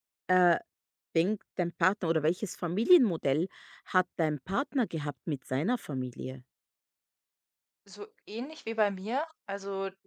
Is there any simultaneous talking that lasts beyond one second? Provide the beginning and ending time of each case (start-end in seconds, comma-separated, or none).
none